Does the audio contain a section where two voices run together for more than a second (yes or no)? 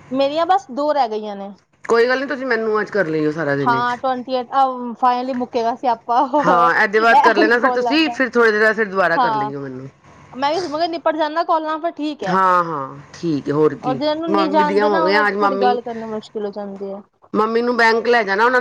yes